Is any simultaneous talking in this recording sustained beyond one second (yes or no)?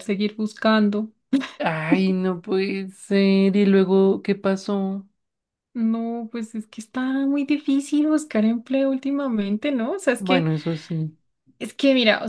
no